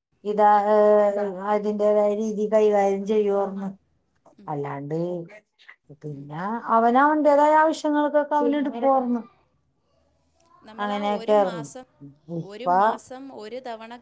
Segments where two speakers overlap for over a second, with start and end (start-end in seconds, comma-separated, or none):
none